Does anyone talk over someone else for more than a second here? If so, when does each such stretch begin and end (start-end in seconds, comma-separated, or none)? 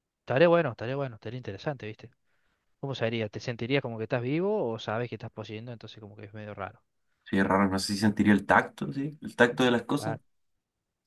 none